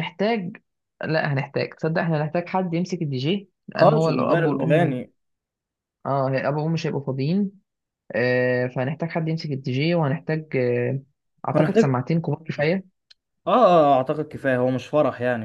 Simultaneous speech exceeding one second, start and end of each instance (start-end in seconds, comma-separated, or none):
3.7-5.0